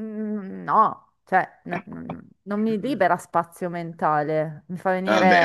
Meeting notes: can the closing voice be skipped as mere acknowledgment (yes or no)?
no